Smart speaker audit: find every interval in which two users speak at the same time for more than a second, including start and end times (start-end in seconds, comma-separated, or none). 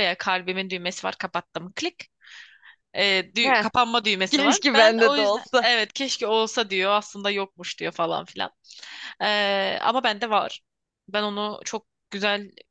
4.3-5.7